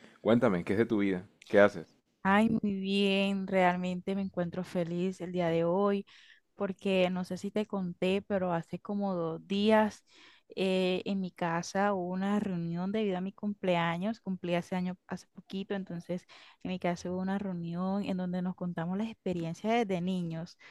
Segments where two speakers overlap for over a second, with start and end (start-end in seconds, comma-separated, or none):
none